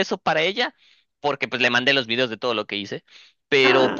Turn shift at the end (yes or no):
no